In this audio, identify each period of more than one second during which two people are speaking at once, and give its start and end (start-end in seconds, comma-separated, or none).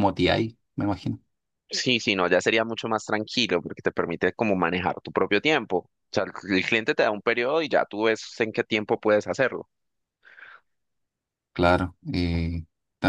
none